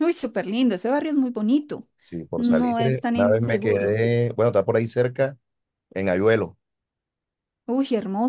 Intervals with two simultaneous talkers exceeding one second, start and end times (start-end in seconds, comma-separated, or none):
2.4-4.0